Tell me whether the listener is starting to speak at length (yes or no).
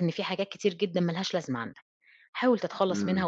no